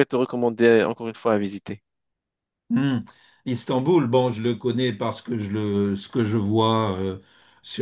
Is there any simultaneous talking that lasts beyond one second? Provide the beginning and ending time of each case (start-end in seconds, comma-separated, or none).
none